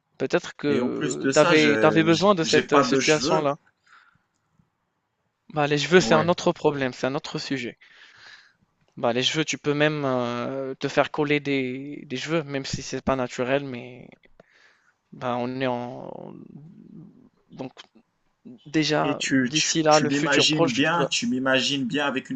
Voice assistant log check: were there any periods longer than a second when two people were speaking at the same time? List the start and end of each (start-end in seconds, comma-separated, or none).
0.7-3.5, 19.0-21.1